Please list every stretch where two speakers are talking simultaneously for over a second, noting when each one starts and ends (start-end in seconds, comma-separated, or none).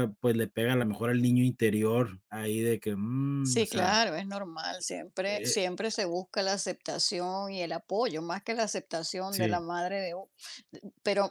none